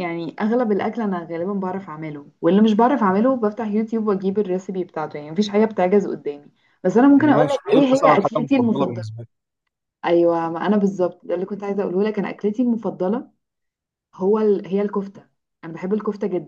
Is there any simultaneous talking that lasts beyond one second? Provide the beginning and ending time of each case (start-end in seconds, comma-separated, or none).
7.1-9.2